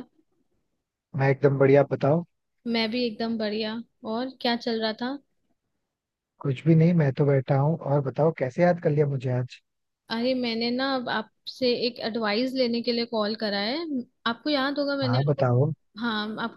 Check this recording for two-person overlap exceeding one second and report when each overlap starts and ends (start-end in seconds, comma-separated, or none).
none